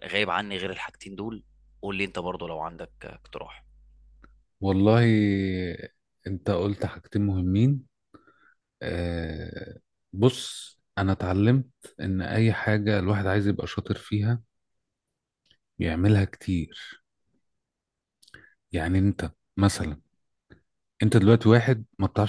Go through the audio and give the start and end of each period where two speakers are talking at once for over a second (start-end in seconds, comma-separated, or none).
none